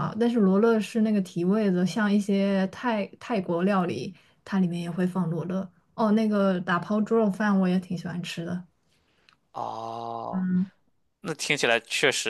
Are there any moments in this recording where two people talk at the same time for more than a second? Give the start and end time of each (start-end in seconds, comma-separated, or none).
none